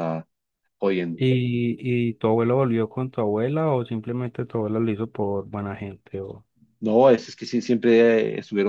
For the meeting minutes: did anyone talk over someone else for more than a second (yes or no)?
no